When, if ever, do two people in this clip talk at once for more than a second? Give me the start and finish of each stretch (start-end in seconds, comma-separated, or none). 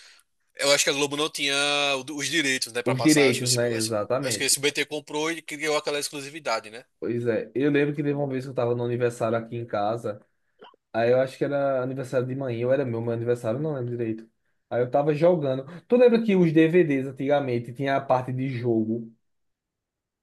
2.9-4.5